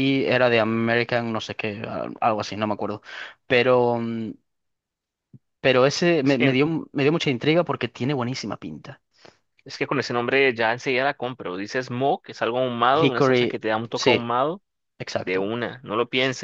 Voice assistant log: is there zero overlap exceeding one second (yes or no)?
no